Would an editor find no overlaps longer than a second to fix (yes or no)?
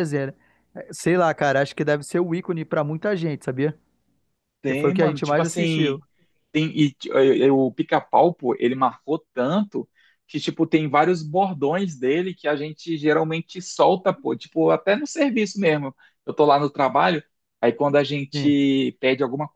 no